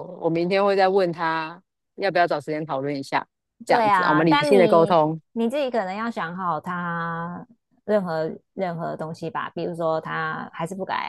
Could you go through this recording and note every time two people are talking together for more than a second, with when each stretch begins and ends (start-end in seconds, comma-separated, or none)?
3.6-5.0